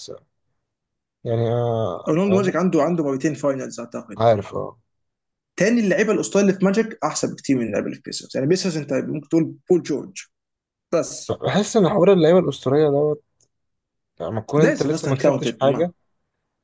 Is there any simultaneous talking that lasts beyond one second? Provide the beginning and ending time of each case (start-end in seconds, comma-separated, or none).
14.6-15.9